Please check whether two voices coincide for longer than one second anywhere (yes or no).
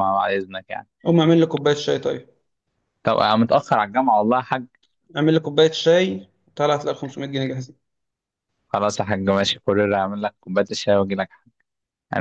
no